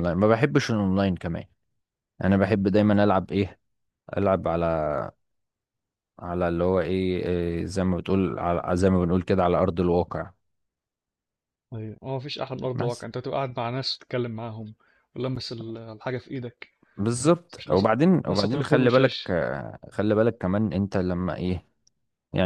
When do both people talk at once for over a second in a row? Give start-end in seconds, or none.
17.6-19.3